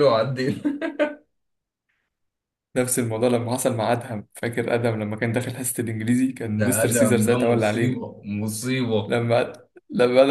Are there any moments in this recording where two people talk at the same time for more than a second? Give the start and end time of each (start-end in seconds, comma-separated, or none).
6.5-8.0